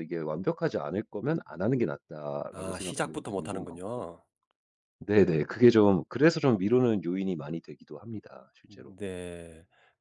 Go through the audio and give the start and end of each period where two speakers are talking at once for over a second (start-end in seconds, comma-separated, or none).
2.5-4.1